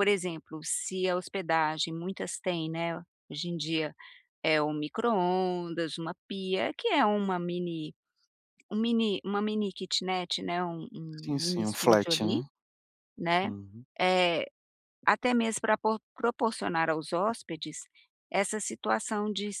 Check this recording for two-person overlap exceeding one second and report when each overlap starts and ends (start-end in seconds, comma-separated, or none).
11.2-12.4